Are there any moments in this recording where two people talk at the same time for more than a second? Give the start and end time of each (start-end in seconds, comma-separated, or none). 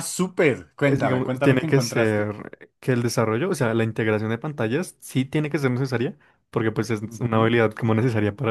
0.8-2.3